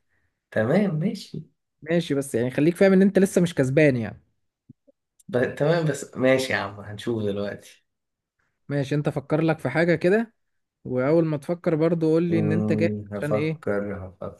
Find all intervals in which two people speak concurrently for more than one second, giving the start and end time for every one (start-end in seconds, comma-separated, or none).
12.3-13.6